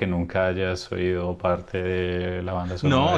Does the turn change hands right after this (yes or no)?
yes